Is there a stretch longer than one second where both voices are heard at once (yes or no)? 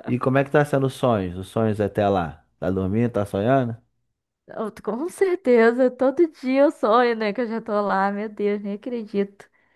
no